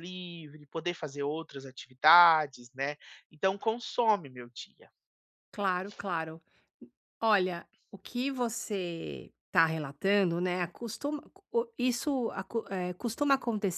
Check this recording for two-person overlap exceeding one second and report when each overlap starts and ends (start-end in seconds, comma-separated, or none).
none